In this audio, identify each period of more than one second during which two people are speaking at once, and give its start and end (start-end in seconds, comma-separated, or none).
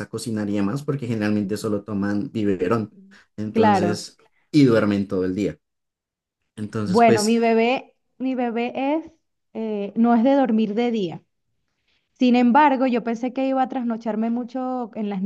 none